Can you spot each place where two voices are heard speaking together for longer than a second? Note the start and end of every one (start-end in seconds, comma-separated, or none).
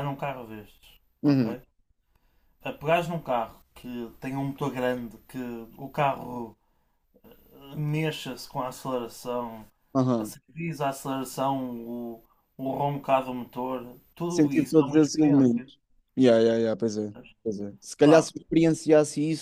14.3-15.7